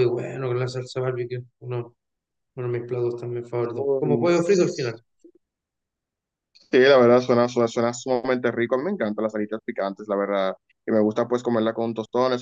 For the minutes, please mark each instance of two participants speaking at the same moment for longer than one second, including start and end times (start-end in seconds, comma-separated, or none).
3.7-4.9